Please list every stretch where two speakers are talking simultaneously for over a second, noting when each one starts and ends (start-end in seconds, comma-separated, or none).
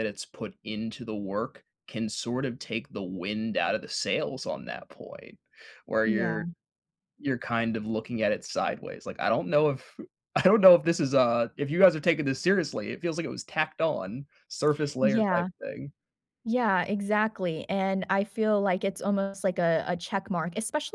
none